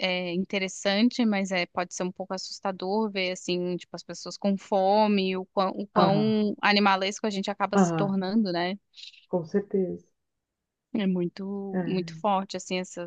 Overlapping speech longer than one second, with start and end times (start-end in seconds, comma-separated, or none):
none